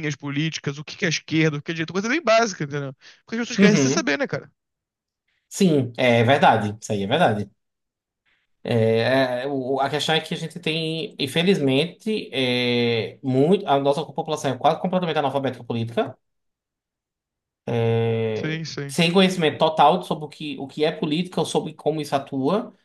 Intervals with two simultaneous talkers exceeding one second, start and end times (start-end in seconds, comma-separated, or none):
none